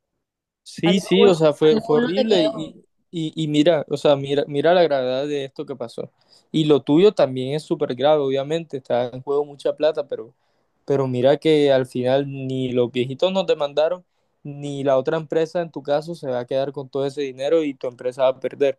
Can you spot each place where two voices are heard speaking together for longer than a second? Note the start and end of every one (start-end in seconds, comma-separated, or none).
0.8-2.7